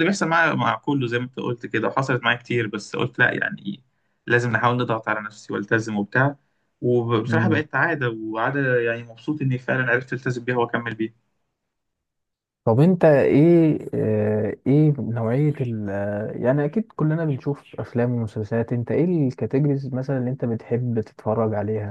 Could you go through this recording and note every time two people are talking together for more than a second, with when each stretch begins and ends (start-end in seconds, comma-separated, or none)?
none